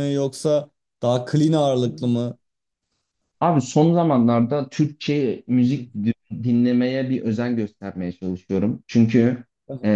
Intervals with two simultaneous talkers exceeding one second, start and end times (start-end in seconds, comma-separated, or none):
none